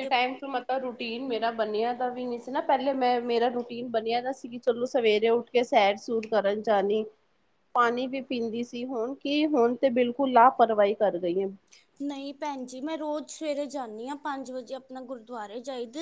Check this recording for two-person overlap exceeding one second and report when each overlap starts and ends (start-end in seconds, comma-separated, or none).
none